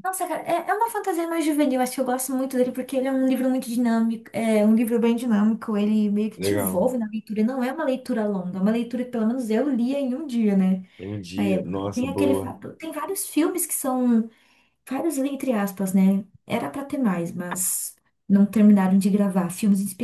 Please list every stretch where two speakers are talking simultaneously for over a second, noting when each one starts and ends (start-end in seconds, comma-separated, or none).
11.3-12.6